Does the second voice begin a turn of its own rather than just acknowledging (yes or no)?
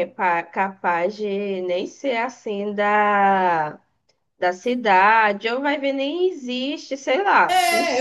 yes